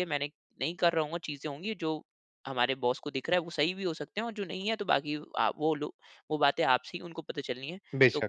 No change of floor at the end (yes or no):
yes